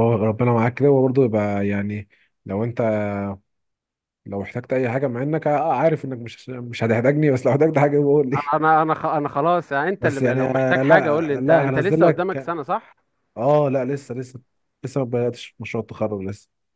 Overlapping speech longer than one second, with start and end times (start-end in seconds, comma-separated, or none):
10.0-12.5